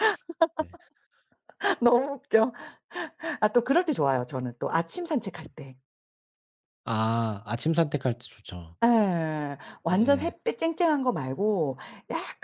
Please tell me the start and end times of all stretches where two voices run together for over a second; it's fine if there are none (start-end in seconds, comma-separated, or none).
none